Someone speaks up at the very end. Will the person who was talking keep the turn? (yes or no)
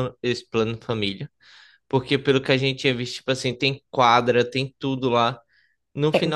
yes